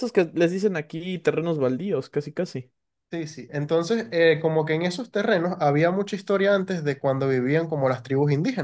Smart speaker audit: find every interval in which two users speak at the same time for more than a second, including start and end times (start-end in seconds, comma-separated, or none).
none